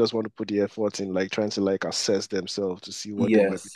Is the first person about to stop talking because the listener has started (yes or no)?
yes